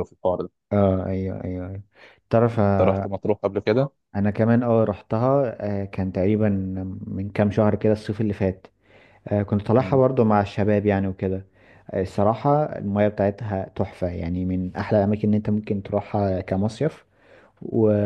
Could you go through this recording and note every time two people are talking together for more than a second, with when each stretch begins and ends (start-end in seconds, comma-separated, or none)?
none